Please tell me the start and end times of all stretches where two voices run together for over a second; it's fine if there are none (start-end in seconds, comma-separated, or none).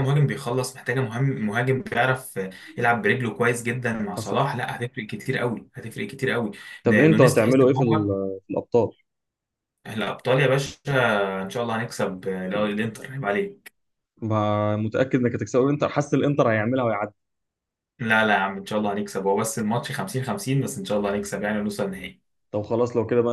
6.8-8.1